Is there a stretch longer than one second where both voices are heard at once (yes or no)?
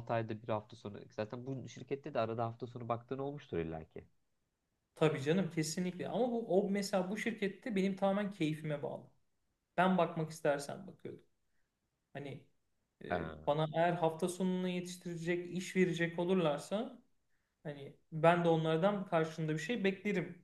no